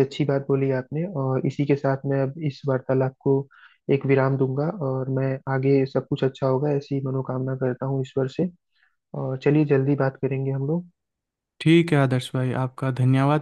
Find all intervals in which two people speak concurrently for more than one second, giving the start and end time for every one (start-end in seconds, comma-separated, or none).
none